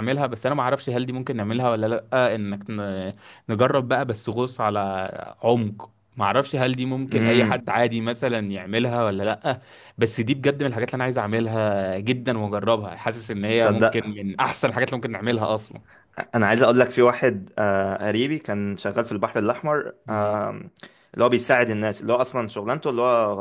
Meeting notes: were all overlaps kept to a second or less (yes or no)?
yes